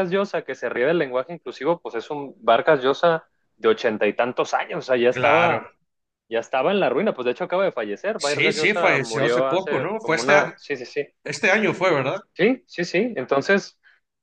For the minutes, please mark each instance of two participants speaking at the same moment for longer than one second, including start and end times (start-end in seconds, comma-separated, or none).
8.2-10.5